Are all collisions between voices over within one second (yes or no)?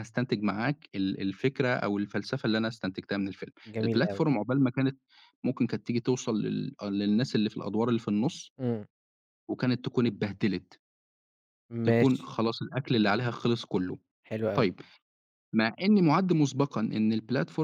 yes